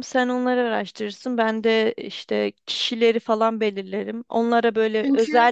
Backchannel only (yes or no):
yes